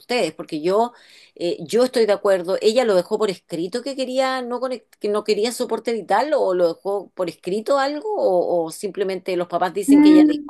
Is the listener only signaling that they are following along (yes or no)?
no